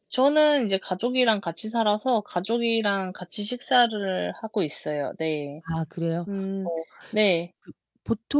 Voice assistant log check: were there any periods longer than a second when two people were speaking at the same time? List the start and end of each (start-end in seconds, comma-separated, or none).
none